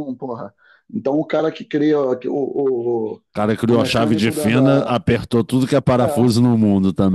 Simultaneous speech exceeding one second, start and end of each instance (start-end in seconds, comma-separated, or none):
3.7-5.0